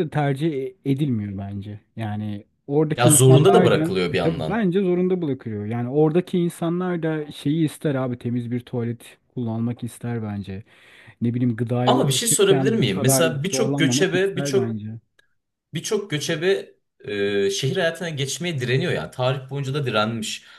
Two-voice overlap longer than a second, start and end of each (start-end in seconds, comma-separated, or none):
3.0-4.6, 11.8-14.7